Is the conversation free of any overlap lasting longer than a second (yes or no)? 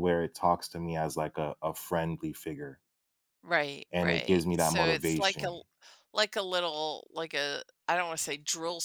no